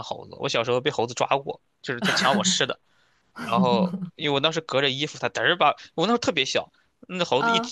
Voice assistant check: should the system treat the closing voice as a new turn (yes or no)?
no